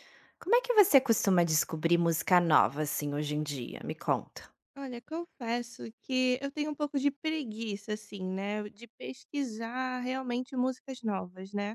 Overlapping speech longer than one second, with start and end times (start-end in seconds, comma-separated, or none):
none